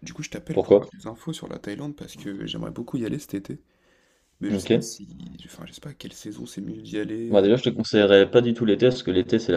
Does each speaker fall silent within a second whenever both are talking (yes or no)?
yes